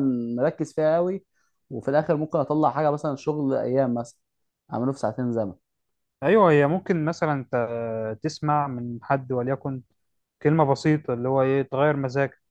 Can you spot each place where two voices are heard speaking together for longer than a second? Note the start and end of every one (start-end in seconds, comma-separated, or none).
none